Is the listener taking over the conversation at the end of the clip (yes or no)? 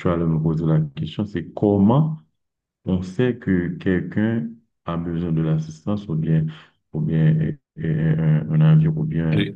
yes